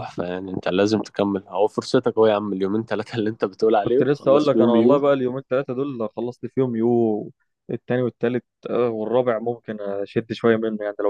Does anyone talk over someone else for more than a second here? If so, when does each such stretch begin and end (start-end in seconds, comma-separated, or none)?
3.8-5.0